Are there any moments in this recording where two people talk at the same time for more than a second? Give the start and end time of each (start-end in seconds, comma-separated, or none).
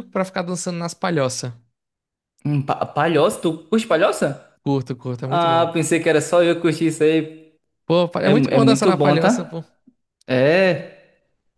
8.2-9.6